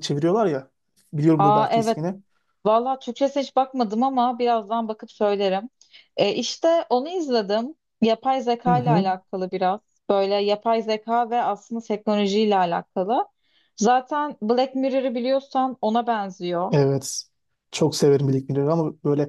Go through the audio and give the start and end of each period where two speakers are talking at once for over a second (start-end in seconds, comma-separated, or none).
none